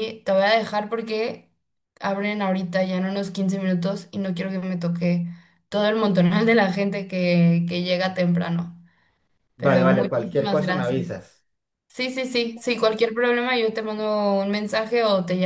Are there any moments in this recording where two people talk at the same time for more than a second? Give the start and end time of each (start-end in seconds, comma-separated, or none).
9.6-11.0